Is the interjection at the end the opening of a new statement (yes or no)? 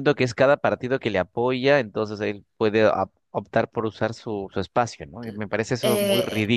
yes